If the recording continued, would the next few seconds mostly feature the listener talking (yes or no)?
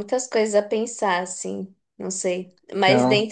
no